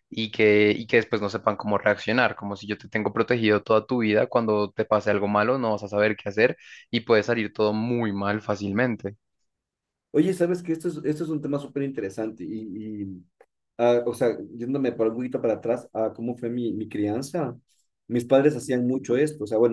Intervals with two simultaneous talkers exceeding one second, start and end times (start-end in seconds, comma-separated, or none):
none